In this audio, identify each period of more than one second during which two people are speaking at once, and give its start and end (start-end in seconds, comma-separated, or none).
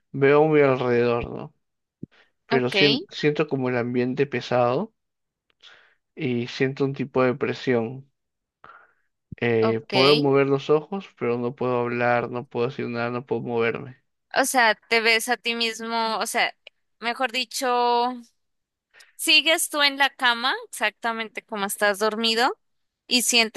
none